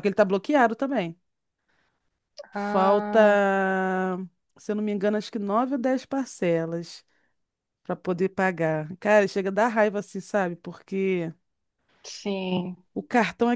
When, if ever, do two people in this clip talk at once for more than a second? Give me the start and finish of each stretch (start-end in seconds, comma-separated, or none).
none